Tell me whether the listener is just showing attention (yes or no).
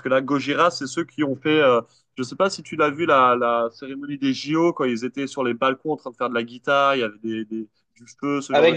no